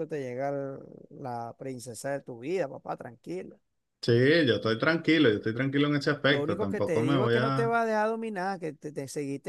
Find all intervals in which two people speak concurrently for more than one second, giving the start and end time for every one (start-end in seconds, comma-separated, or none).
6.3-7.8